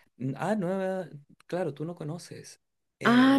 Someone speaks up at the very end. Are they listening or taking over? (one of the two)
taking over